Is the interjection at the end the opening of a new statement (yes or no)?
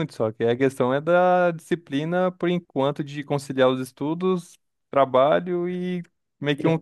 no